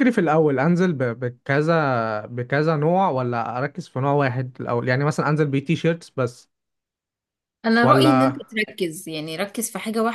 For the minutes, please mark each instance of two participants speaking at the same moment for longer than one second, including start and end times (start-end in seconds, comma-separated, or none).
none